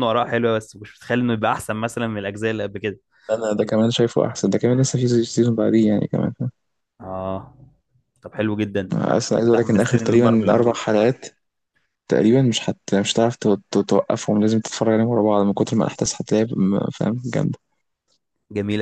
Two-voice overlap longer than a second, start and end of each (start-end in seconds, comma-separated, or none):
9.2-10.8